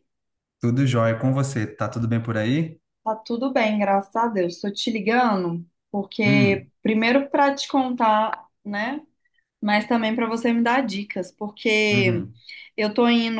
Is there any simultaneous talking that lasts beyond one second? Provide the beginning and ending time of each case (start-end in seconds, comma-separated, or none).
none